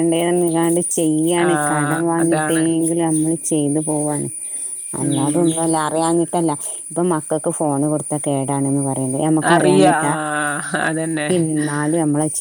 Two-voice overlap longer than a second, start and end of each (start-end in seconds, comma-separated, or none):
none